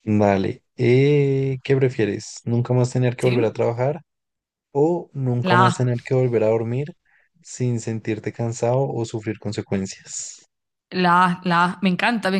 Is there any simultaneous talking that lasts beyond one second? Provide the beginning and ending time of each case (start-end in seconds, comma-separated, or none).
none